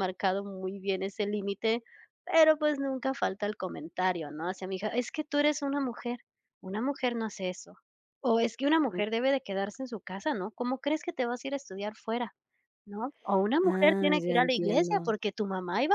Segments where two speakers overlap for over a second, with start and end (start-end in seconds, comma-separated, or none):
13.6-15.1